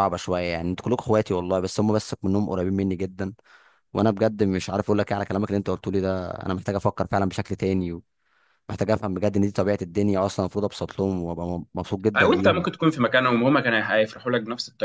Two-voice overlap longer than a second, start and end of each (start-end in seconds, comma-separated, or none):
none